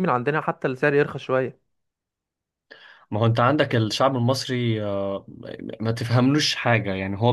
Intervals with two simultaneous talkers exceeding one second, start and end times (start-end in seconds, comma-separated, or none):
none